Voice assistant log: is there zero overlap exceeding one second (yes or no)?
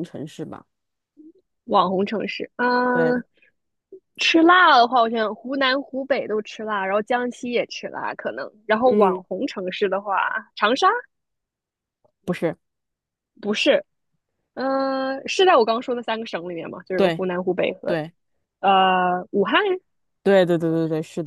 yes